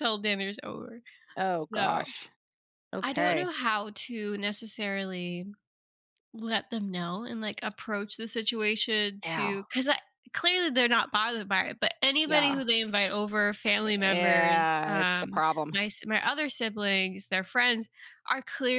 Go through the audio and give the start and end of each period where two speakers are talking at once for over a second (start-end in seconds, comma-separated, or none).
14.0-15.8